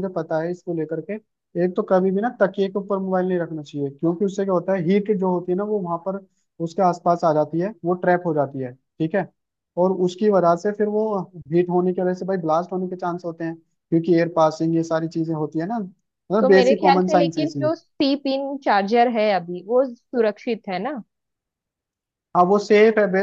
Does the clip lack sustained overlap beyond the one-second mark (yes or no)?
no